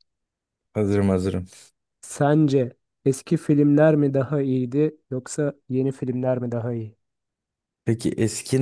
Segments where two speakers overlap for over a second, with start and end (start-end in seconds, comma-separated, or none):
none